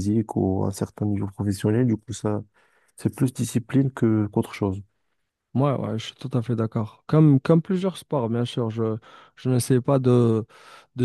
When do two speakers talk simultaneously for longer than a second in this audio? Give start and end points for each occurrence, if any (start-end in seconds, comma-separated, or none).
none